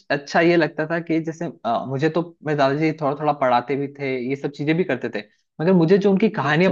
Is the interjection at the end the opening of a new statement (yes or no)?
no